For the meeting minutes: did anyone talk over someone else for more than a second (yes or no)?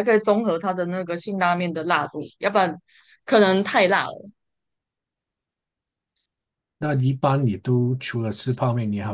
no